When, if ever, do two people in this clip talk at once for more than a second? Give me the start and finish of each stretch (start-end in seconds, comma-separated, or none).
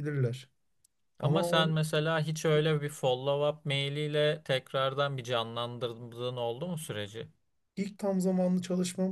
none